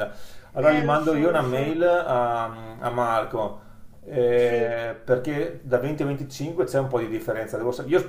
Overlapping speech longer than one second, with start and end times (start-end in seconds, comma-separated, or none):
0.6-1.8